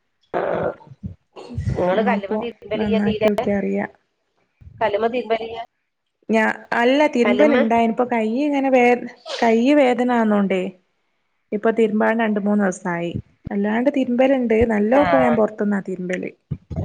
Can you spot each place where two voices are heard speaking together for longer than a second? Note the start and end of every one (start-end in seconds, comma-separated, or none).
none